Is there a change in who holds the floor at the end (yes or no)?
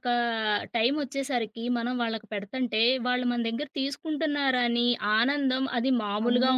yes